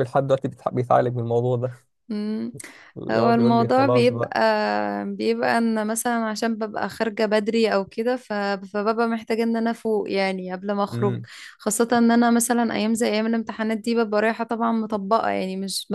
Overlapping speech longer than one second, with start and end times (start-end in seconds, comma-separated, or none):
3.1-4.3